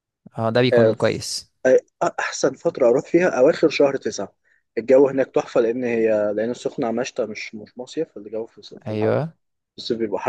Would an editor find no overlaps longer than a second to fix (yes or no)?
yes